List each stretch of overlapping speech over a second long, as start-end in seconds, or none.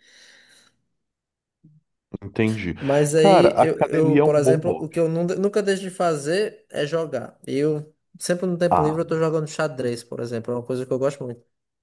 3.1-5.0